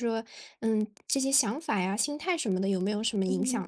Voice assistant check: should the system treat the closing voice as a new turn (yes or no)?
yes